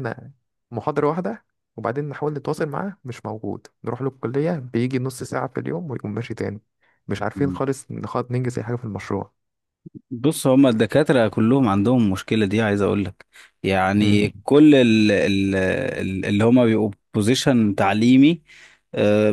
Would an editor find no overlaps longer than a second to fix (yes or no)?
yes